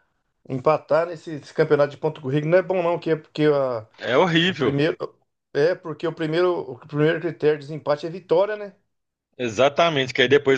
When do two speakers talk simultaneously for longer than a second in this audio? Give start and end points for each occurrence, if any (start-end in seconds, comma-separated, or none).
none